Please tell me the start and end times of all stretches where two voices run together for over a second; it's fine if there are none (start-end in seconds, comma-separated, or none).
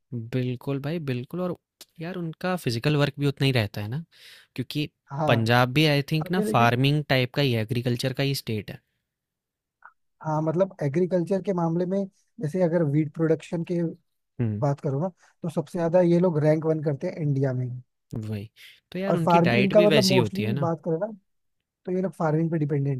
19.1-20.7